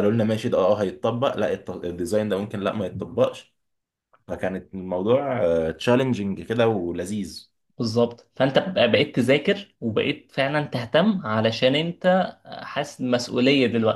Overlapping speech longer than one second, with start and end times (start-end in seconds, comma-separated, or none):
none